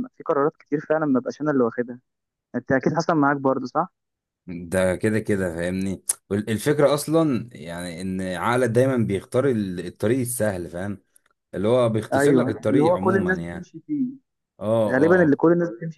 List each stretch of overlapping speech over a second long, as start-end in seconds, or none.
12.1-13.7